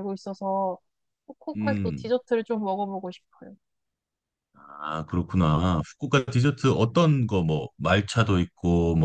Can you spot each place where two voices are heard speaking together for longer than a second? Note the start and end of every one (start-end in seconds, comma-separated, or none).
none